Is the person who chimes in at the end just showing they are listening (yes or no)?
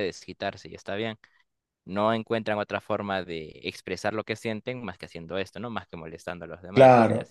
no